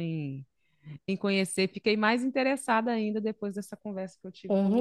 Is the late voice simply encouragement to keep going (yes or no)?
no